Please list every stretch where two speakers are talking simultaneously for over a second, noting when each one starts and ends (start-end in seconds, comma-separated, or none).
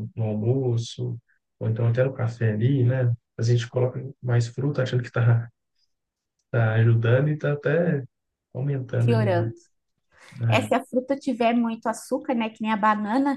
none